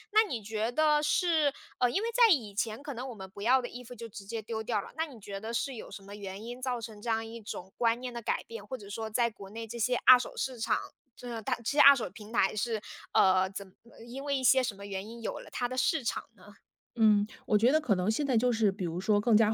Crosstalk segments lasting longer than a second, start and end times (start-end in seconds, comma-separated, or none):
none